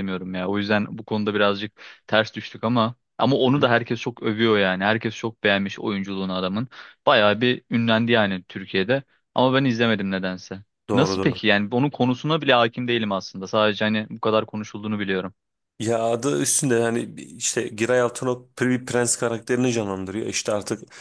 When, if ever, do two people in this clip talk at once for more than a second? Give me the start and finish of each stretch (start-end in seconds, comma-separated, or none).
none